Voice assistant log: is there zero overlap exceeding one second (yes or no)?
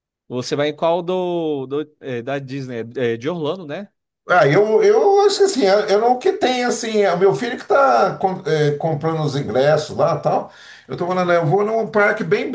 yes